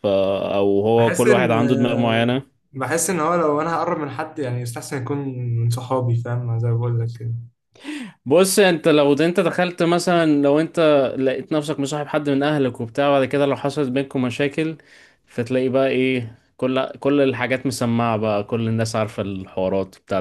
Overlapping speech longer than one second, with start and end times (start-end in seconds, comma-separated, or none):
none